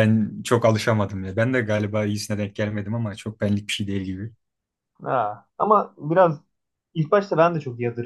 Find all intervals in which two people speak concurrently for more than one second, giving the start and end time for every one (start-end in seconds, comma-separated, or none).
none